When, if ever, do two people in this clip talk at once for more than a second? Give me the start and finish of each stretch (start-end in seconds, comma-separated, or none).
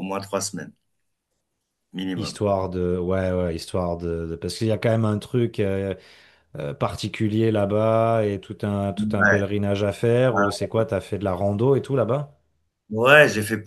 none